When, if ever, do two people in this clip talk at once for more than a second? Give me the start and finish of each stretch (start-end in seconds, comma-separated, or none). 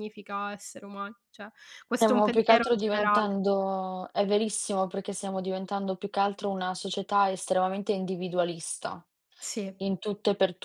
2.0-3.3